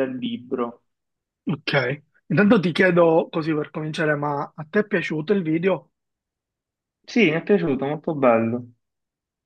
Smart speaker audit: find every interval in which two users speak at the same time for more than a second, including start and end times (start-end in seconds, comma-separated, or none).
none